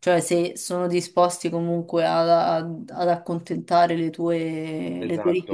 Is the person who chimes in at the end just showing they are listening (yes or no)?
no